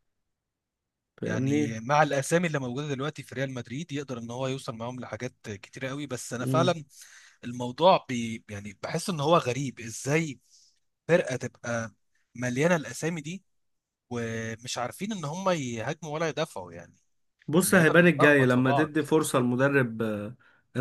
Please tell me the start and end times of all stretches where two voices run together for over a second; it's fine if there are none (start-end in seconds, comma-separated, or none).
17.6-19.0